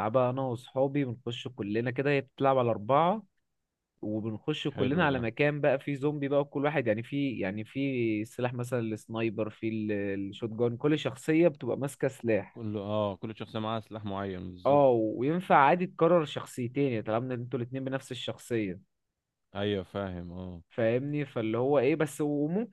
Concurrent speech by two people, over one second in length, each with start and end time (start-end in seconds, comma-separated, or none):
none